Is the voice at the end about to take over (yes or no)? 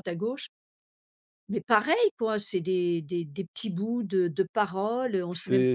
yes